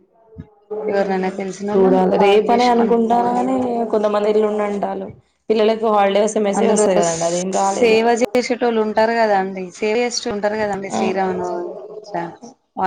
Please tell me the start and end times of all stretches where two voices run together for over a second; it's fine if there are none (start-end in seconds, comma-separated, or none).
1.7-3.4